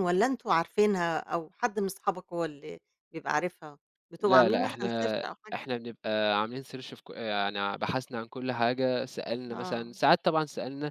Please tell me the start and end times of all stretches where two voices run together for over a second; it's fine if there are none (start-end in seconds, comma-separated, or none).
4.2-5.7